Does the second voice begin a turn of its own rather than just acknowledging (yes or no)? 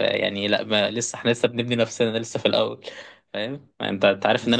no